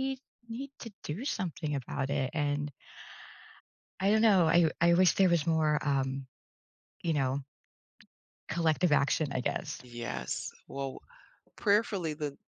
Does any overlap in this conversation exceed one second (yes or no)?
no